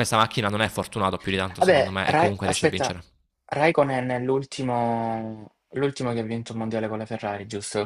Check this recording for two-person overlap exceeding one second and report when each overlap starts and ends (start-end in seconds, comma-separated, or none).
1.6-3.0